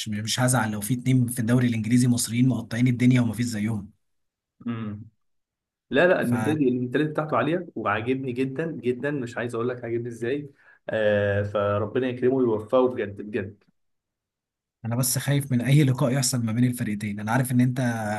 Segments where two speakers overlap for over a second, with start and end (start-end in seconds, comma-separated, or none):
none